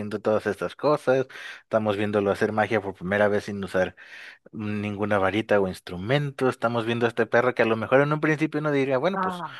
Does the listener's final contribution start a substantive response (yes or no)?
no